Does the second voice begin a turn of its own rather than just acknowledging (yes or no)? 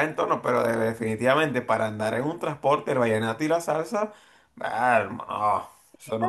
yes